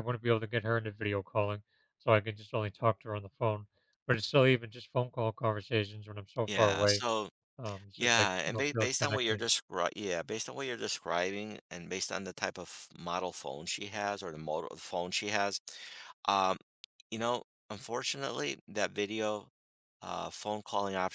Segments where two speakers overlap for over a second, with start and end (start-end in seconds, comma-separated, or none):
8.0-9.5